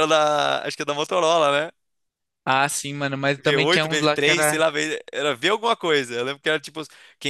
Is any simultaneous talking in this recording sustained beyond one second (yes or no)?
yes